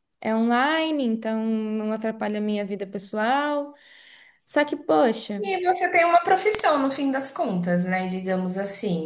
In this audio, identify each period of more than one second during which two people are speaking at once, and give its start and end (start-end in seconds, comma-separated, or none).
none